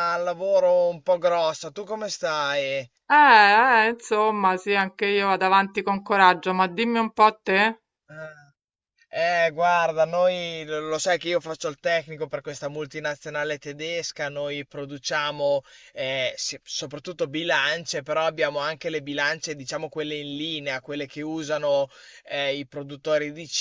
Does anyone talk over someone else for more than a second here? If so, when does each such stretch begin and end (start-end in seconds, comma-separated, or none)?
none